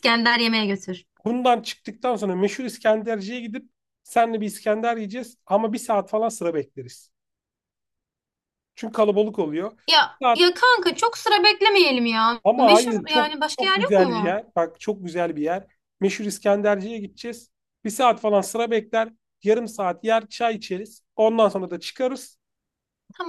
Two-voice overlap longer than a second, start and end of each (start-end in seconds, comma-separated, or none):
12.4-14.4